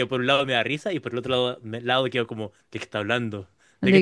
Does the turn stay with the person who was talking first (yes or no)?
no